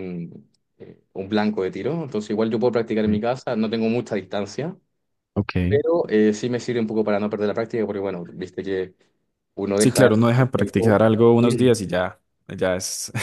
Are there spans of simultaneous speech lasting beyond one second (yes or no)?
yes